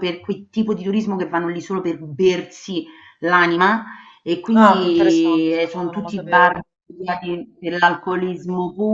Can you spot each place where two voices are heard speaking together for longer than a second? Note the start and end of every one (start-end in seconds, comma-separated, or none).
4.5-6.5